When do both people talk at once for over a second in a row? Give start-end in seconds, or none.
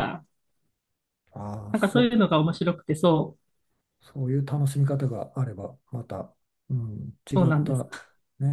none